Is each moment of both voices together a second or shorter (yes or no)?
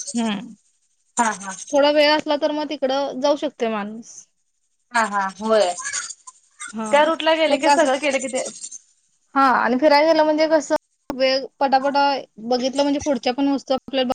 yes